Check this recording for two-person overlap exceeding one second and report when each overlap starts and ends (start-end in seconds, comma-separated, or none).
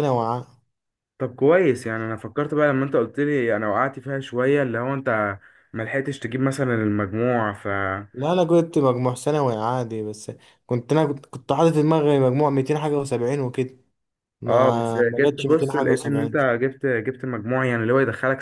14.5-16.4